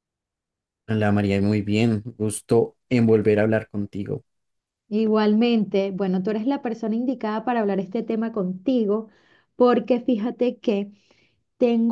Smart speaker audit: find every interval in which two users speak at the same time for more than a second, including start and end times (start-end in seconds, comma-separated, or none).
none